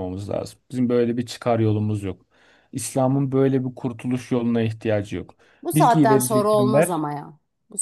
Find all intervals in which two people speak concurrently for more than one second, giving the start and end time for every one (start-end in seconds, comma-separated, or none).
5.7-7.0